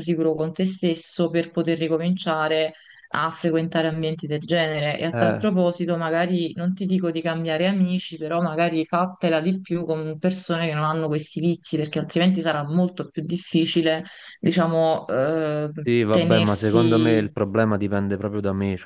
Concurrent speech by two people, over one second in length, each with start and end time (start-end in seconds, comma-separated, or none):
16.1-17.3